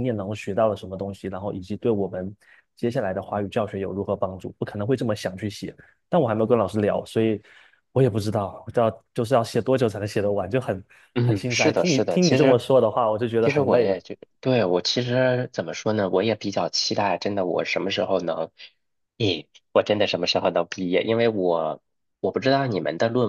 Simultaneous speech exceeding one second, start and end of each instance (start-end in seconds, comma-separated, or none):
11.2-12.6